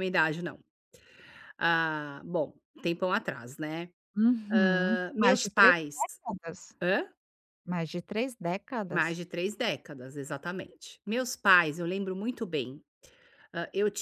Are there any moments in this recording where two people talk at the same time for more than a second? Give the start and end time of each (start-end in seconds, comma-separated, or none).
4.5-6.0